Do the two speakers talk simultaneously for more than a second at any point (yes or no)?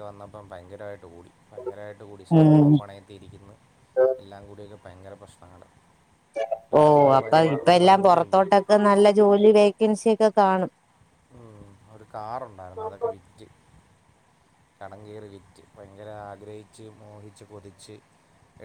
no